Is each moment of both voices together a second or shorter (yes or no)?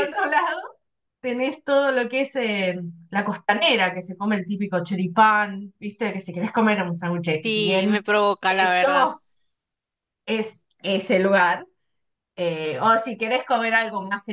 no